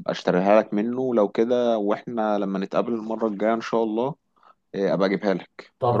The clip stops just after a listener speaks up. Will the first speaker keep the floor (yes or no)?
no